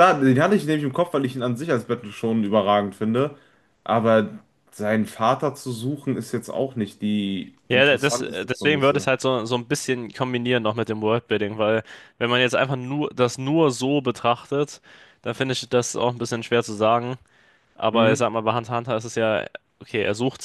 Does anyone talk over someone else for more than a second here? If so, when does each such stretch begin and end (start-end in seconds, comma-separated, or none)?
7.7-9.1